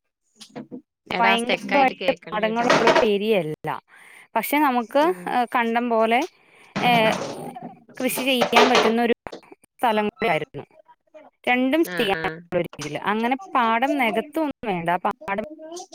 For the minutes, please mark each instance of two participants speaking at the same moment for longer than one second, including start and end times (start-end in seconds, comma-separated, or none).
1.2-2.7